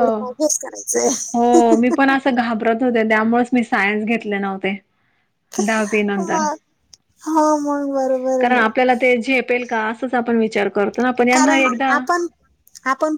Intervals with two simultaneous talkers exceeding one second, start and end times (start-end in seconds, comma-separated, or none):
none